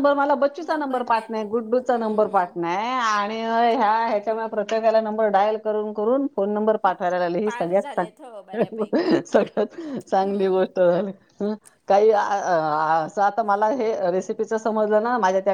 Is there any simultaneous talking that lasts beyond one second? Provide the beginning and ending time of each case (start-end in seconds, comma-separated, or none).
1.1-2.6